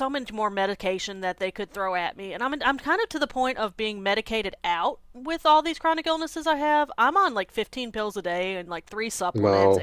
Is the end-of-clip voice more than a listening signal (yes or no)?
no